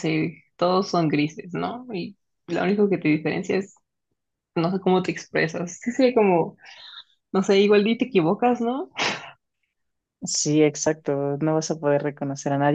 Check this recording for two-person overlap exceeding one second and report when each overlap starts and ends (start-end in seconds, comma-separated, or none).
none